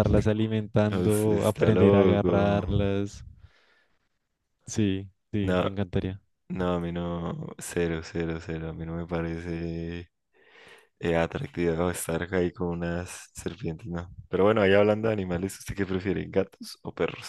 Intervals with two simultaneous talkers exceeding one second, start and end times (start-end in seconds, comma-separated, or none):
0.9-2.6